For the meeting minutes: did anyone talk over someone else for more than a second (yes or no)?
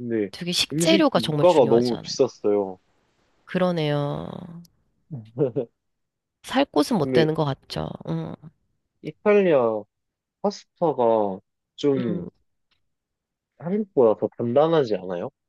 yes